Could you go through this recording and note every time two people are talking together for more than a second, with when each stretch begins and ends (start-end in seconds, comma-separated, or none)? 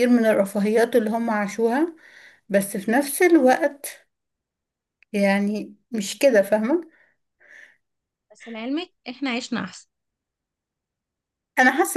none